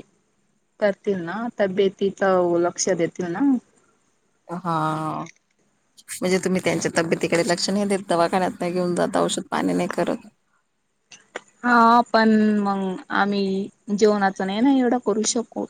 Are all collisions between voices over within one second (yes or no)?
yes